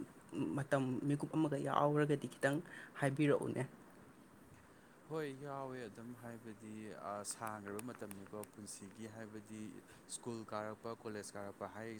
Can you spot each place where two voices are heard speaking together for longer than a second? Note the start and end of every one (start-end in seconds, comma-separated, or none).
none